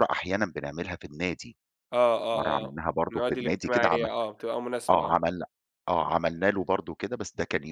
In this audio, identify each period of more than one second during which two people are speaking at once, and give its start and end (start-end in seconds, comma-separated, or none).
2.3-4.0